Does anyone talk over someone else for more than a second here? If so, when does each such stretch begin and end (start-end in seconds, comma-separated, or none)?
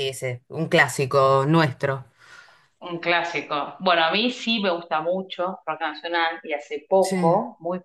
none